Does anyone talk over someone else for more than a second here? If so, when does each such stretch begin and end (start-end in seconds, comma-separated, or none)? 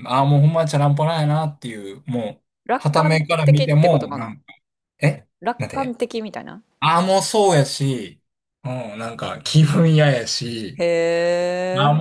2.6-4.3